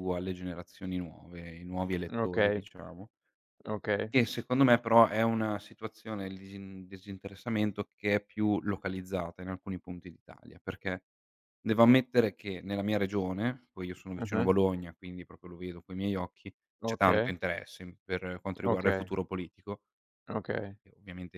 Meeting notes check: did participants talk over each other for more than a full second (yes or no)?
no